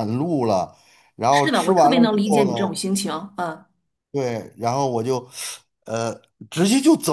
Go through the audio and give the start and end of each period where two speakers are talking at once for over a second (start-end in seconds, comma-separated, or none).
1.3-2.8